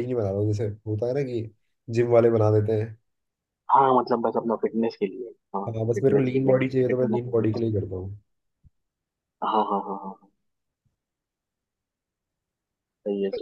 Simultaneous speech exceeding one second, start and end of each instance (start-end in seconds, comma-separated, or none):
5.7-7.5